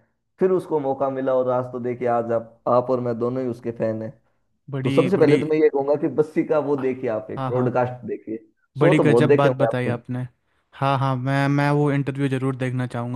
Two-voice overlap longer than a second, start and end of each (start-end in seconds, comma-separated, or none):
8.8-10.0